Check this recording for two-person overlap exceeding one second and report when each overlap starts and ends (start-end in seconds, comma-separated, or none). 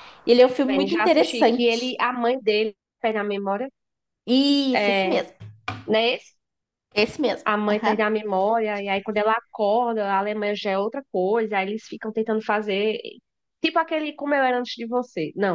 0.7-2.0